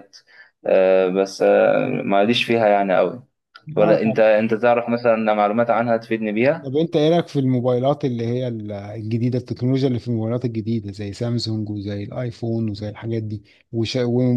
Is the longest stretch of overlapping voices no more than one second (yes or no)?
yes